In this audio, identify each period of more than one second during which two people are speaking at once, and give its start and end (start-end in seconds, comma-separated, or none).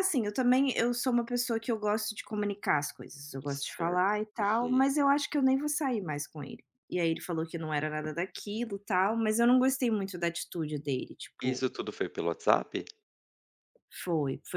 3.5-4.8